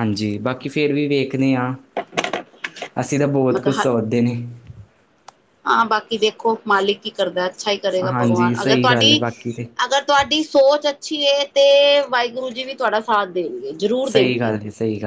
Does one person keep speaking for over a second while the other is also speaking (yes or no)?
yes